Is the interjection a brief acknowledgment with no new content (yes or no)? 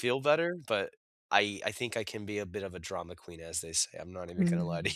no